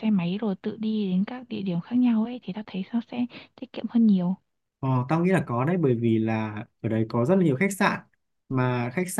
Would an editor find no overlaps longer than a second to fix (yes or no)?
yes